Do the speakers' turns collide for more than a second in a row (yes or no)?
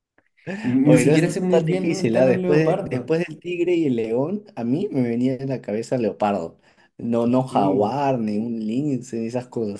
yes